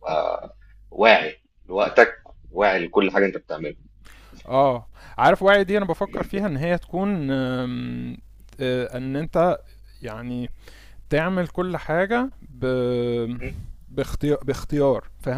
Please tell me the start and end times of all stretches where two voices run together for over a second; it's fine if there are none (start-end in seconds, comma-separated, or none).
none